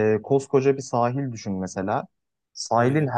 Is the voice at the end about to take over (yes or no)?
no